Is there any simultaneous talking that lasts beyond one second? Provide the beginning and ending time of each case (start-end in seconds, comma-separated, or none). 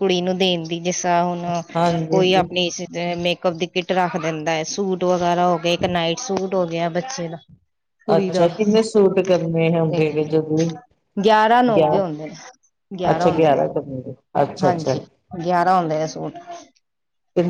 none